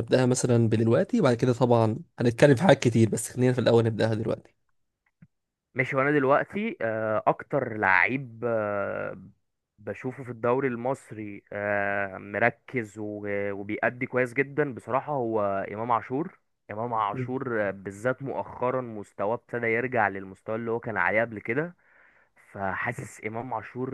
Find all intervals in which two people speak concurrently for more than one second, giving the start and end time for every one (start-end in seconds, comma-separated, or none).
none